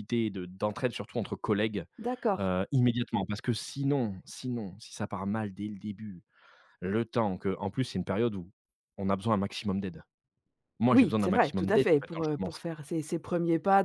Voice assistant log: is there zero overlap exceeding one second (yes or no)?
no